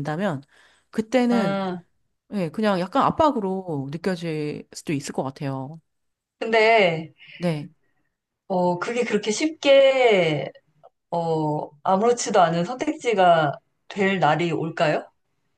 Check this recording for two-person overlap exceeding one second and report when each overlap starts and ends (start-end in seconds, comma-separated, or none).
none